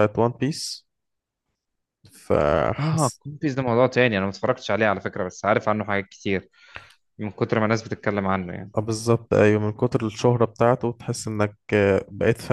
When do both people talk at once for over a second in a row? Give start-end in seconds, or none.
none